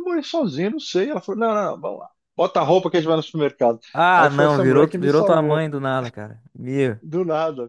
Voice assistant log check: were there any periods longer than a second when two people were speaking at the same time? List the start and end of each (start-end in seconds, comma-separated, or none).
4.2-5.6